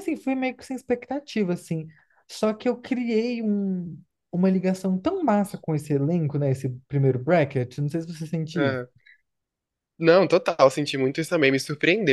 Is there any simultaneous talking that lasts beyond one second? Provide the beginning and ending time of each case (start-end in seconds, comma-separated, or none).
none